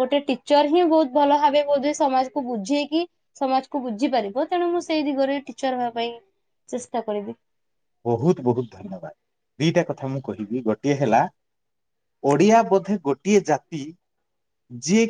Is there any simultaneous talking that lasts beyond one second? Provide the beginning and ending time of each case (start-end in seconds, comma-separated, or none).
none